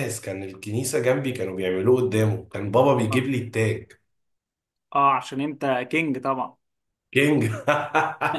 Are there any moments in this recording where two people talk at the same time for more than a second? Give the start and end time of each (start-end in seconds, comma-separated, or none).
none